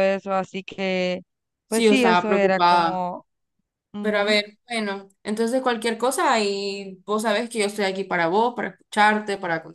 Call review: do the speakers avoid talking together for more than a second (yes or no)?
no